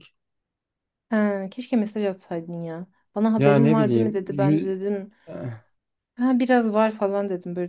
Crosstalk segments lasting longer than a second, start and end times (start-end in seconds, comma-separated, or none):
3.4-4.7